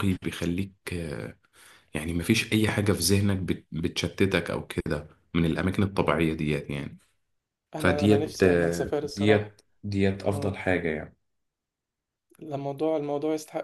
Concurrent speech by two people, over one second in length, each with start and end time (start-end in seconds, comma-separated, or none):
7.8-9.5